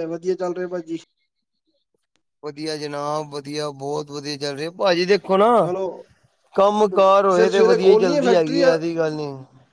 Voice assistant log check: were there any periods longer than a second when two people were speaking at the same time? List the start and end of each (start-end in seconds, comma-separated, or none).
6.9-8.6